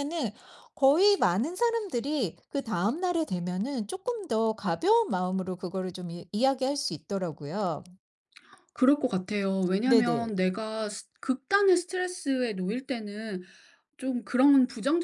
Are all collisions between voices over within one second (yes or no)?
yes